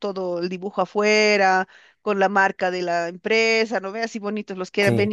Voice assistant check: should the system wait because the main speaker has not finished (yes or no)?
yes